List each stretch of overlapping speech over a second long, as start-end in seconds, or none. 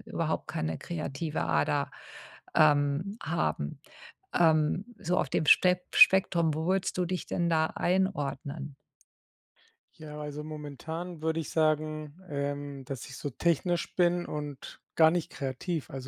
none